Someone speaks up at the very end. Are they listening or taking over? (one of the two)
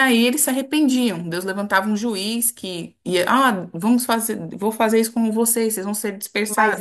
taking over